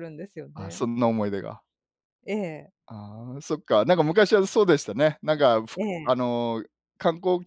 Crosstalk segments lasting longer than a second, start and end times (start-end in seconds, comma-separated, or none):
none